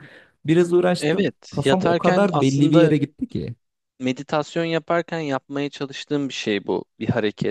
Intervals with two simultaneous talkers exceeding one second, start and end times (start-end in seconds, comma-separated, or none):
1.0-2.9